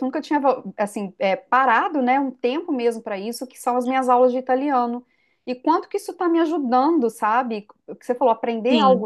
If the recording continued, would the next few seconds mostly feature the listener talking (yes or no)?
no